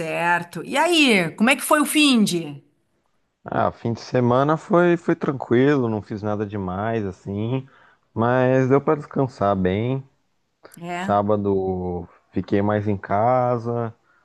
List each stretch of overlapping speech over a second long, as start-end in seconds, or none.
none